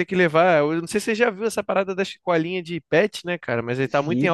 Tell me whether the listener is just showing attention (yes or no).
yes